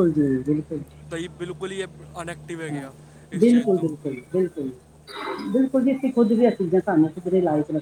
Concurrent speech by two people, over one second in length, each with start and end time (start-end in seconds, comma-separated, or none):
none